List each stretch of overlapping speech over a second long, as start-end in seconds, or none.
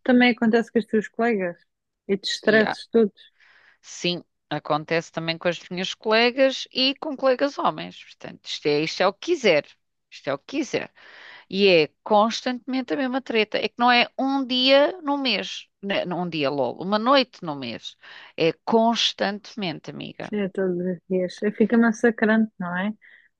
none